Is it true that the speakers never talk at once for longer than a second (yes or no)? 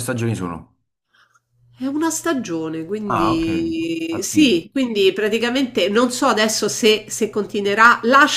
yes